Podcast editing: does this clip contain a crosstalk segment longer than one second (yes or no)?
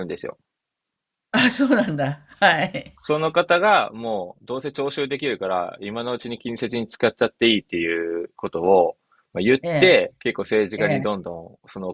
no